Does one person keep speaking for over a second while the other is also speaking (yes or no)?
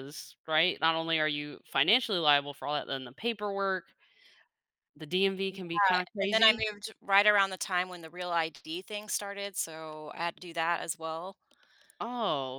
no